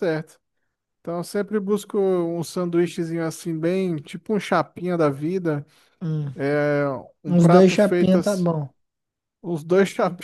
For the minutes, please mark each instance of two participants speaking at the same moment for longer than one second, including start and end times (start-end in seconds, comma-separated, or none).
7.3-8.5